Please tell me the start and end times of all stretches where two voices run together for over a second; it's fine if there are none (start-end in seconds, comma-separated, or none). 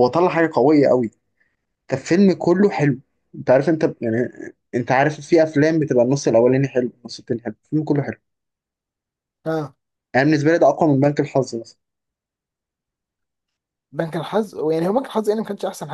none